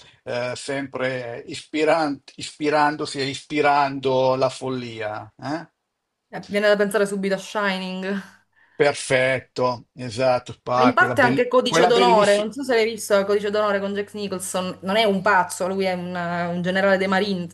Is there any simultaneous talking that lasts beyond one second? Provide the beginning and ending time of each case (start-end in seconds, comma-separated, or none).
10.7-12.5